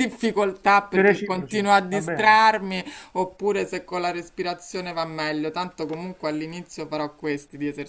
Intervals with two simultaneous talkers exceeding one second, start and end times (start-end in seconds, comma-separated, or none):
0.9-2.5